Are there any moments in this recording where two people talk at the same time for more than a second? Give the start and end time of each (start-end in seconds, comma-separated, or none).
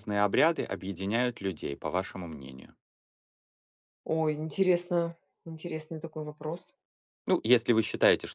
none